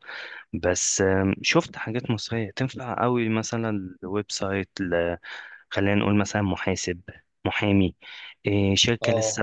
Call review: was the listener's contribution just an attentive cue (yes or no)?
yes